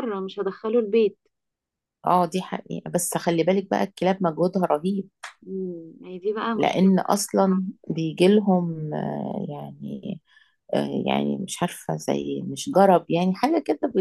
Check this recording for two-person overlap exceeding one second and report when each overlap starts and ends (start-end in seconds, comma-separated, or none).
none